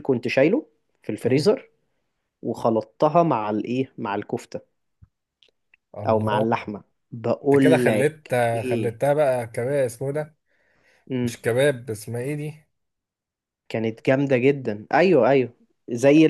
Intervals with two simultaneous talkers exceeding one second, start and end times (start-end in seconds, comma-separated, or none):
7.4-9.0